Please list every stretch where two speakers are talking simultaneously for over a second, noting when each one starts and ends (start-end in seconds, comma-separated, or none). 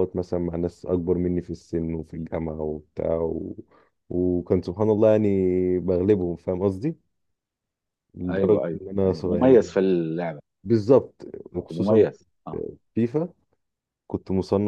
8.3-9.7